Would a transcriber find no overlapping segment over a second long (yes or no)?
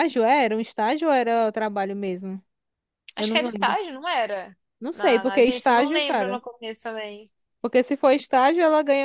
no